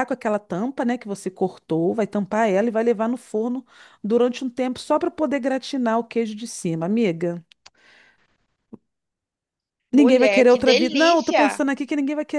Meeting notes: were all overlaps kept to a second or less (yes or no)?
no